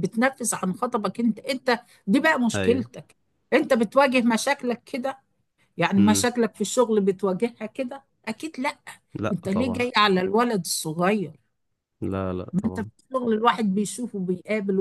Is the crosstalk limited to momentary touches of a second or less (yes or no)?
yes